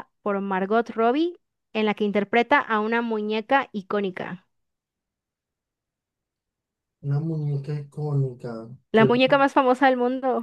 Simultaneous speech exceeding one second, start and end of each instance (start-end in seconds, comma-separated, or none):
none